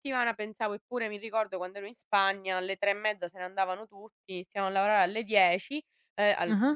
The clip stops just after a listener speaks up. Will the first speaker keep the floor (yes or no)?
yes